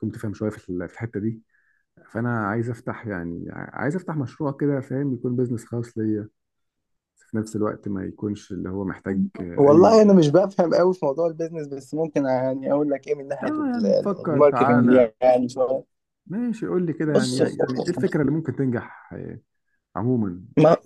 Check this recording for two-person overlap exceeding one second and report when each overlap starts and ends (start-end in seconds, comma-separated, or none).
13.4-15.1